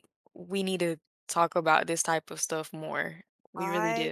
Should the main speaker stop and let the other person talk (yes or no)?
yes